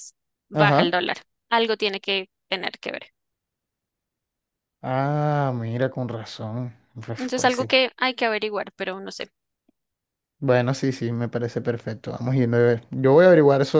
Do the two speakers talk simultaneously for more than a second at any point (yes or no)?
no